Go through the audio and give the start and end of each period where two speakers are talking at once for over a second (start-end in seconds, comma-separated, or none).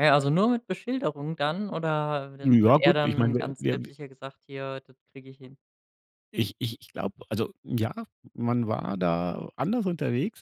2.4-3.9